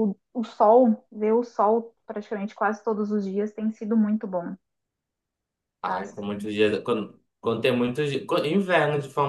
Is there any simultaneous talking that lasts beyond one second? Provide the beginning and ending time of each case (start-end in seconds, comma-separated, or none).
none